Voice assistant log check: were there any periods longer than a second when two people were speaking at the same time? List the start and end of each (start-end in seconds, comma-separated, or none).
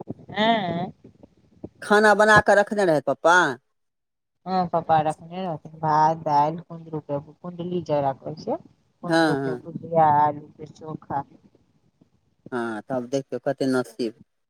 none